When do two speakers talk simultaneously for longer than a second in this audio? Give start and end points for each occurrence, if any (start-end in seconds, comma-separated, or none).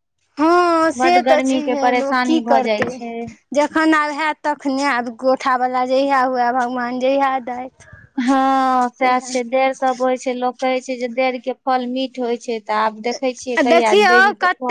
1.0-2.9